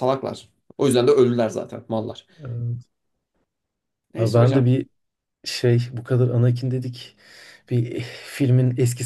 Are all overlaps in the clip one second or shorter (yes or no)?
yes